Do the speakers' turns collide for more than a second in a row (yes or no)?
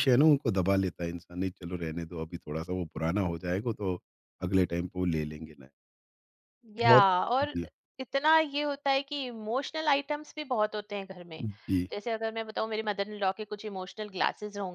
no